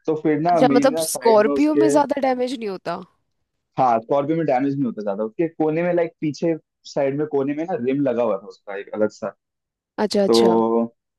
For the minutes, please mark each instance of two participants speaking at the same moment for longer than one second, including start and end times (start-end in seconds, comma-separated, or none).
0.5-1.9